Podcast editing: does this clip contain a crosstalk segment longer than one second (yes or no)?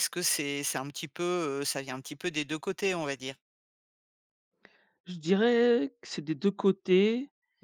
no